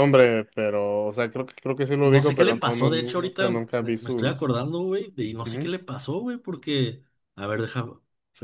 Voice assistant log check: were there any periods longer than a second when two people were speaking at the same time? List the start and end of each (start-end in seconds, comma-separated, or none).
2.0-4.5